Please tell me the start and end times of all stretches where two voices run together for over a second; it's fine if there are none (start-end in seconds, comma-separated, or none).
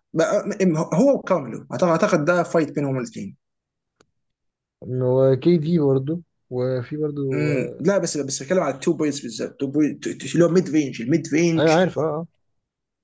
none